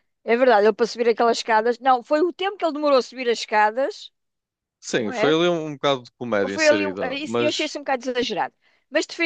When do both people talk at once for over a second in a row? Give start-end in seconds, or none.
6.5-7.7